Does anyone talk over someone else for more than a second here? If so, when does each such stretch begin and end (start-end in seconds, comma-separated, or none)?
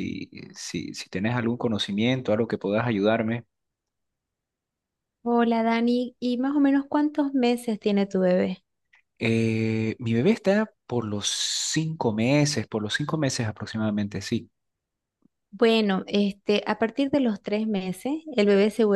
none